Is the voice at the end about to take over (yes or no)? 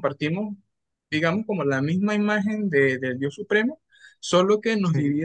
no